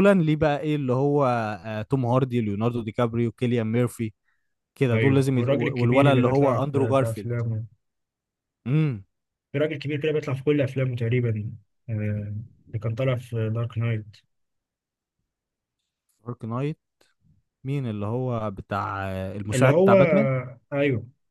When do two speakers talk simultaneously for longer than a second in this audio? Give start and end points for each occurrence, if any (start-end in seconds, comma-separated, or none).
4.9-7.3